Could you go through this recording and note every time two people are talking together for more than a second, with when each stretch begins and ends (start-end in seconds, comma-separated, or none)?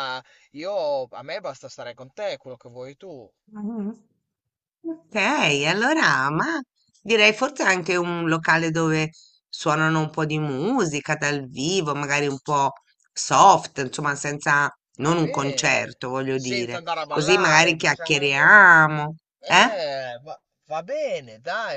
15.0-18.6